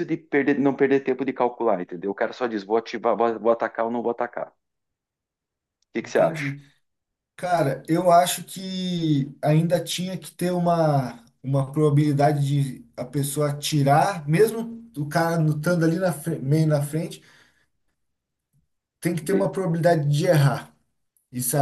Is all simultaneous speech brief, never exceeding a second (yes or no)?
yes